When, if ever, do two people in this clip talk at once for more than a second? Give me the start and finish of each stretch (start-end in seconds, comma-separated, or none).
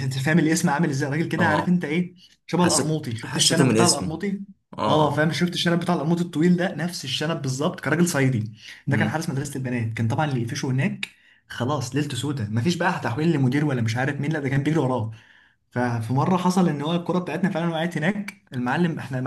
2.6-4.2